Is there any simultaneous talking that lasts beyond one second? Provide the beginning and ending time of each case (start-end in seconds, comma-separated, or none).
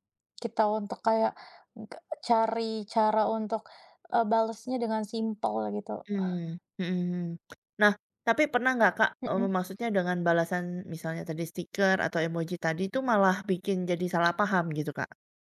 none